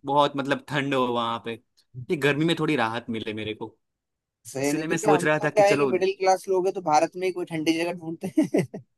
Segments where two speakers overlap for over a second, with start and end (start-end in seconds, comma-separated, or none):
4.6-5.9